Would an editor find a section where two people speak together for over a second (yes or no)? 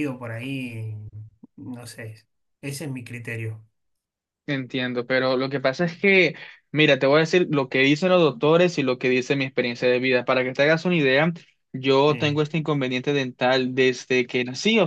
no